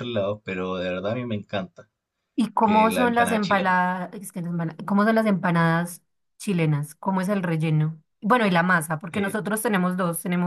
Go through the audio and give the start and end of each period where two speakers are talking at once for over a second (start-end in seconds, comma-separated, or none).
2.6-3.8